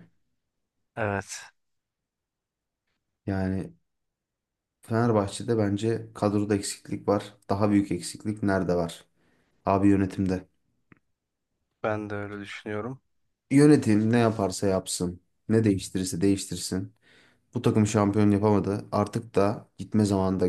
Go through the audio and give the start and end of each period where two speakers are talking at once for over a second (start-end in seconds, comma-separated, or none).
none